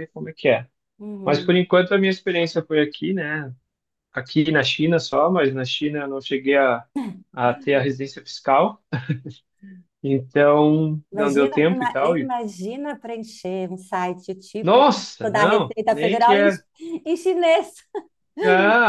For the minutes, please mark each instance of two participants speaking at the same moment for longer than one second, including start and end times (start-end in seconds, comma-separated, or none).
11.1-12.3, 14.6-16.5